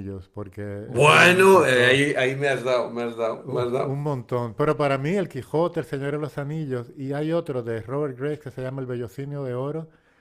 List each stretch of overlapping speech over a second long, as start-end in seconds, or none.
0.8-2.0